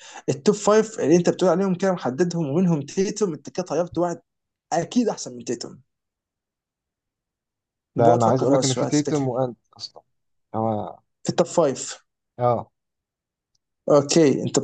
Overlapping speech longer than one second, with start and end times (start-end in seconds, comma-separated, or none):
8.0-9.3